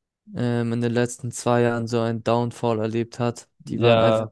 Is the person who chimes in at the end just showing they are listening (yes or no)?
yes